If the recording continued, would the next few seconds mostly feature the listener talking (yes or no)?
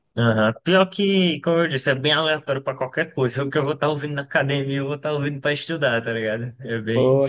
no